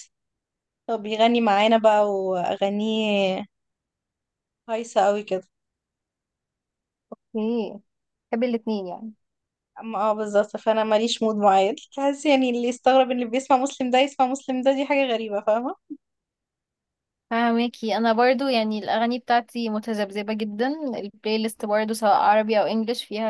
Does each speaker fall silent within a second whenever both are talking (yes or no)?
yes